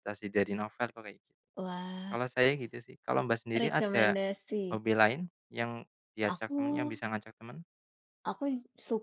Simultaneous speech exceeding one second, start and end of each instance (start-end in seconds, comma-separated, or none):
none